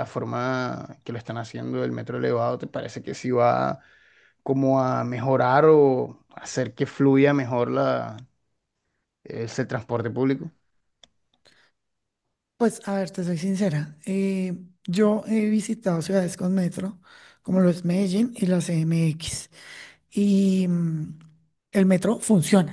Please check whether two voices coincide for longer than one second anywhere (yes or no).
no